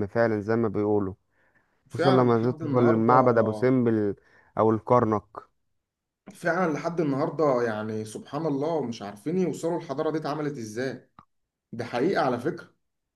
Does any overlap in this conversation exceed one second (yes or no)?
yes